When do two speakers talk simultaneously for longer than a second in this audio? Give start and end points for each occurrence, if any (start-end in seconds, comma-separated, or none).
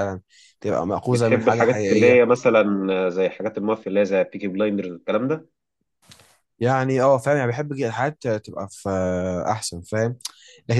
1.1-2.3